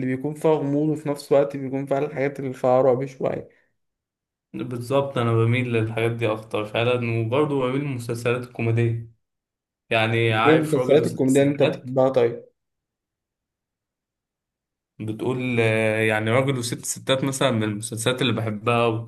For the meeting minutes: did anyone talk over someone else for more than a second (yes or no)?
yes